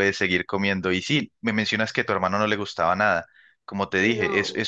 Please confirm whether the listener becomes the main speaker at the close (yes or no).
no